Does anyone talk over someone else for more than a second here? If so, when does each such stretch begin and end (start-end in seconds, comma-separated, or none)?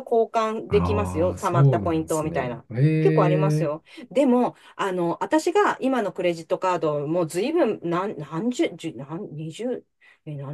0.7-3.9